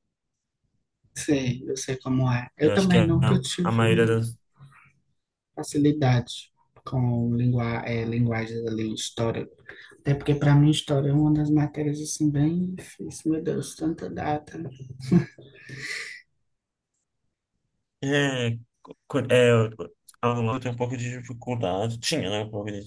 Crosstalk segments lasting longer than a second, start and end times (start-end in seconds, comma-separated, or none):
2.6-4.2